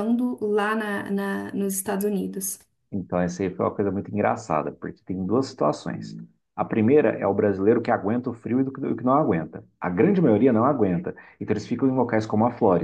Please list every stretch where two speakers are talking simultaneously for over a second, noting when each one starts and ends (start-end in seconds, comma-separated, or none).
none